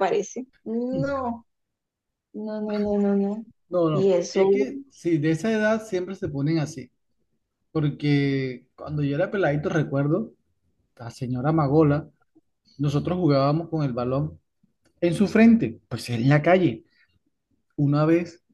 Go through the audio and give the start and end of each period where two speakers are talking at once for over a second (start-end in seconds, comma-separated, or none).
none